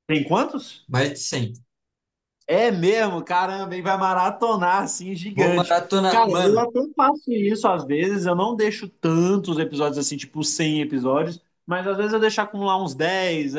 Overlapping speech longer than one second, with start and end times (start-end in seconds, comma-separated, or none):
5.3-6.7